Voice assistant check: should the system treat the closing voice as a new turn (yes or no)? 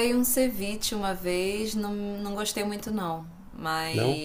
no